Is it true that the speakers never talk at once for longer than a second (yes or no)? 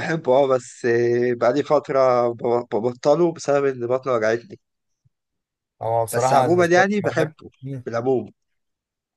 no